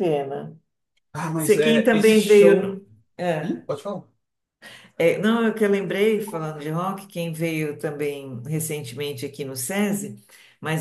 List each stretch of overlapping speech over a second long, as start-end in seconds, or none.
1.4-2.8